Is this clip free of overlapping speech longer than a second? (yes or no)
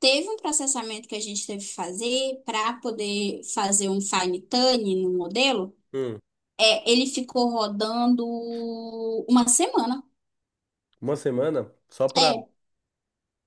yes